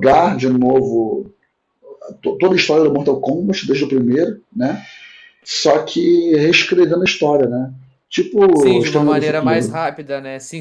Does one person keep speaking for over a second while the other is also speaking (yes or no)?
yes